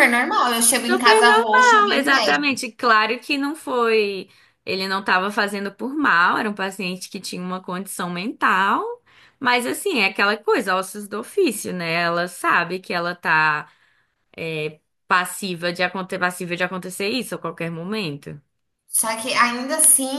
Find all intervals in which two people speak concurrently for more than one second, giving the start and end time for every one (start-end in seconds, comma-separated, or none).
0.9-2.1